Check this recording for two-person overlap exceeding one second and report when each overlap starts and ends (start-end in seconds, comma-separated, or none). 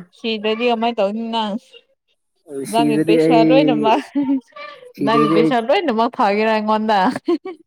2.7-4.0